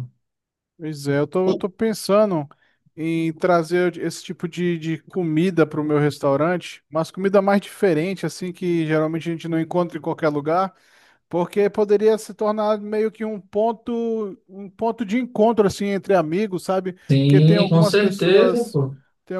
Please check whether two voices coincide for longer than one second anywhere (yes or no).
yes